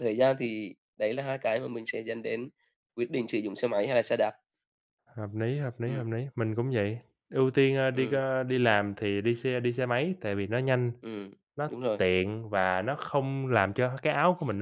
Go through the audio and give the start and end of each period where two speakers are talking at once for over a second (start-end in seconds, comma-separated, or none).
none